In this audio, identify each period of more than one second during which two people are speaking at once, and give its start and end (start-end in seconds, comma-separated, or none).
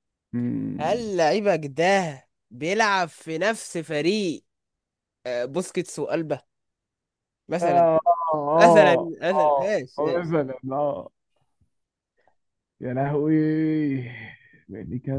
8.5-10.4